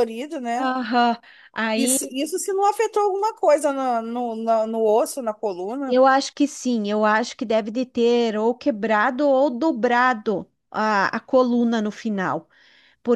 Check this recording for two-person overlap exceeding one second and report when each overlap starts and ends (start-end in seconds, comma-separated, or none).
none